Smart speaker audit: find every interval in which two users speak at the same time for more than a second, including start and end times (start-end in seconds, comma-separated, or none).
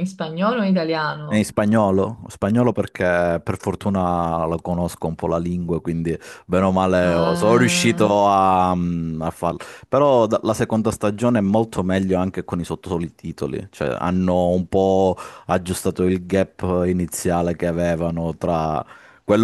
7.0-8.3